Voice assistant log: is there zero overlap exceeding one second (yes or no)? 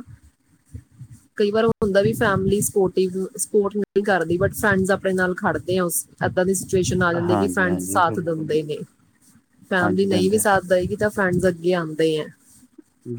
no